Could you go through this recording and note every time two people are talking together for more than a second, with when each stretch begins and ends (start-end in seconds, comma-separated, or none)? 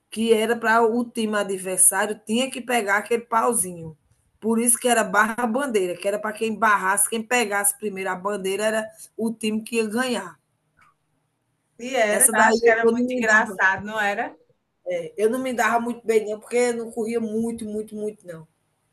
12.1-13.6